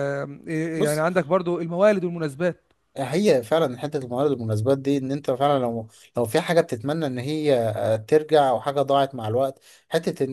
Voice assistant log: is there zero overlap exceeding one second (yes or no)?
yes